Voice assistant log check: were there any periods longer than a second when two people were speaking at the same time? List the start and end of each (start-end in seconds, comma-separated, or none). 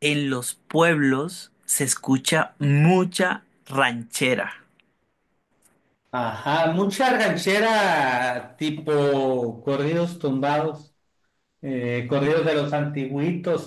none